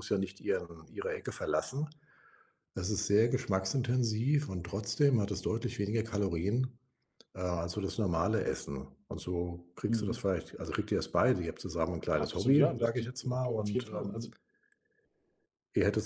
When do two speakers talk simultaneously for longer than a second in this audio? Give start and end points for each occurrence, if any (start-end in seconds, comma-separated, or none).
12.2-14.2